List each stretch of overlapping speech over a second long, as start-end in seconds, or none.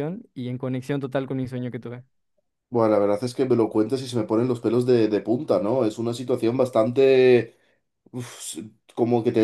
none